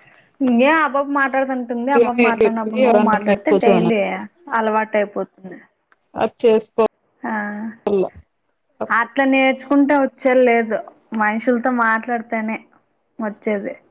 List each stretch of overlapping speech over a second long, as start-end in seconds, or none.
2.0-3.9